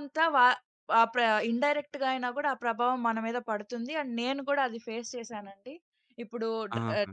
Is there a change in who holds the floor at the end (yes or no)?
no